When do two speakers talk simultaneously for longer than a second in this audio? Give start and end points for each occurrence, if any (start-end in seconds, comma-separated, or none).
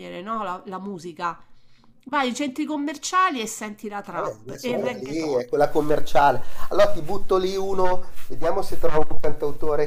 4.1-5.4